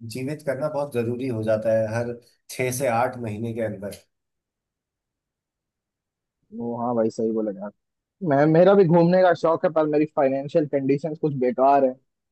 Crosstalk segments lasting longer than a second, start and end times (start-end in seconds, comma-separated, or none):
none